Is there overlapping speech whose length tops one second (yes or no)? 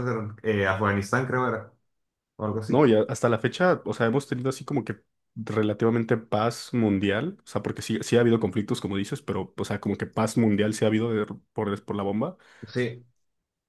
no